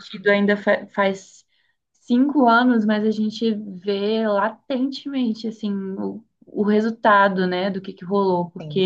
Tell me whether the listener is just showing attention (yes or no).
yes